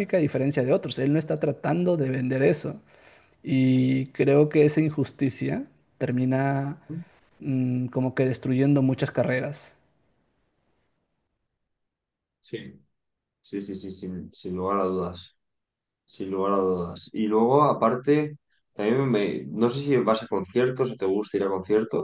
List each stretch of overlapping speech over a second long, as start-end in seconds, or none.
none